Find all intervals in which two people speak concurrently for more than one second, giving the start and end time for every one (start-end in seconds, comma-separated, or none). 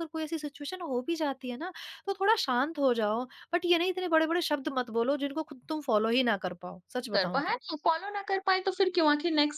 none